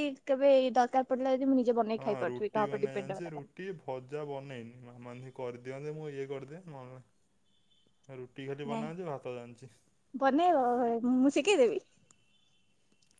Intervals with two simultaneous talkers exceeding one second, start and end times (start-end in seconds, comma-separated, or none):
2.0-3.5